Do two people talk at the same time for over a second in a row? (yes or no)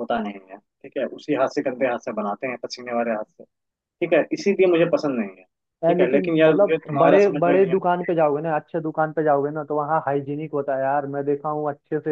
yes